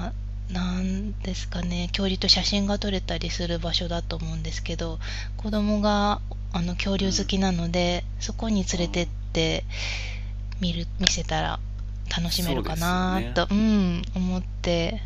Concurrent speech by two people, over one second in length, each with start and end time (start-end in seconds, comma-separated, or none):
12.2-13.4